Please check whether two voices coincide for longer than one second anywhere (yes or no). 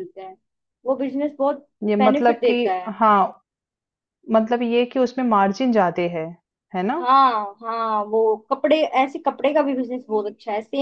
no